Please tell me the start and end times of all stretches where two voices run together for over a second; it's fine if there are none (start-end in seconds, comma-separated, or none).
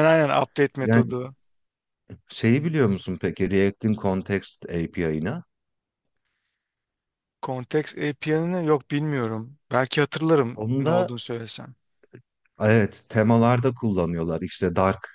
none